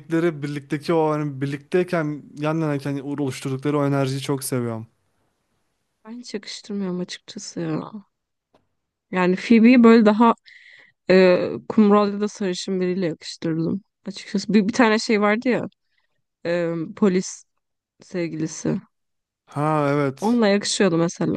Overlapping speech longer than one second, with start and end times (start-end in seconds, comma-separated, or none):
none